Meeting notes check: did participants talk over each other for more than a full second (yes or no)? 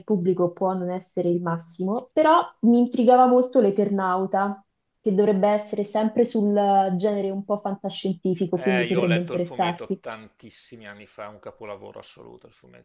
yes